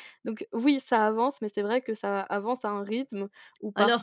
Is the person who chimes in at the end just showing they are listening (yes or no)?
yes